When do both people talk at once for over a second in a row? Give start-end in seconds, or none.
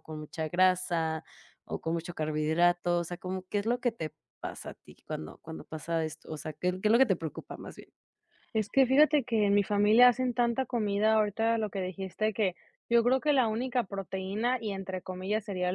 none